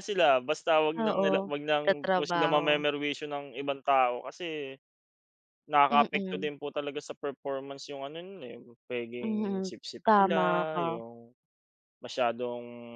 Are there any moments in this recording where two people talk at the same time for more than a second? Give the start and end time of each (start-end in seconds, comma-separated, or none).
1.0-2.9, 9.2-11.0